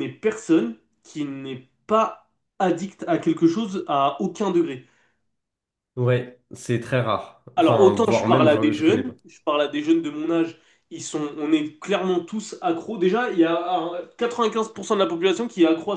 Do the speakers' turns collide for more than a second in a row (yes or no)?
yes